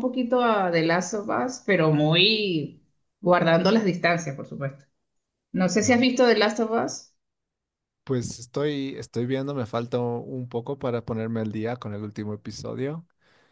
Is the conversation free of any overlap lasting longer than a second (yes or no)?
yes